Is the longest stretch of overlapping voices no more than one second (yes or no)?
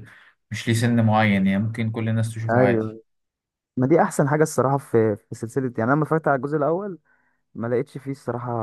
yes